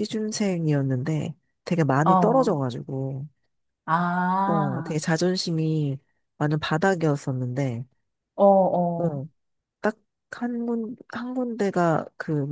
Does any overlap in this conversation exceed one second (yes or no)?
no